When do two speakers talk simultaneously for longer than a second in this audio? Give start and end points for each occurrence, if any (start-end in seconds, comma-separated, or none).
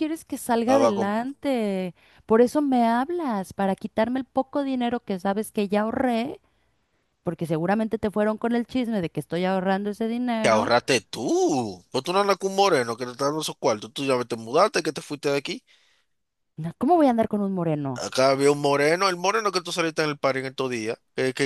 none